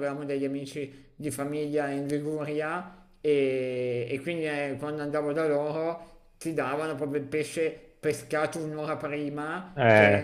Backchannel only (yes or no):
yes